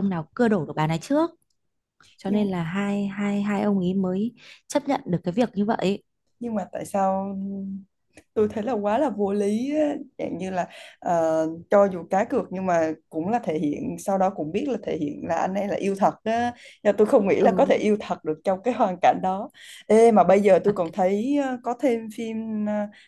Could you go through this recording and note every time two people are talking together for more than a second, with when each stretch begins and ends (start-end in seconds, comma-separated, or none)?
none